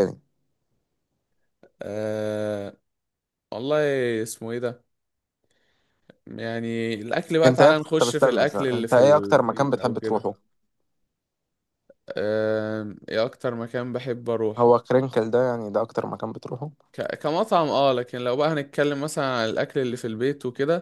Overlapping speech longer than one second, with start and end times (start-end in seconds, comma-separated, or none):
7.4-10.3